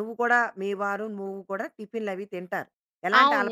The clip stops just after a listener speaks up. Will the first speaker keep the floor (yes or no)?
no